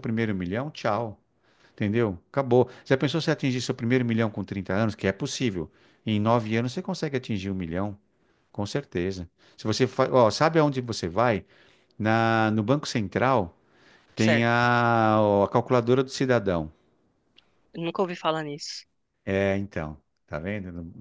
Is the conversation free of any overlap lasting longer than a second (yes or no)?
yes